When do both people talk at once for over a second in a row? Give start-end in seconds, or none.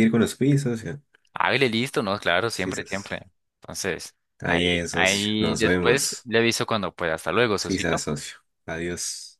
4.4-6.3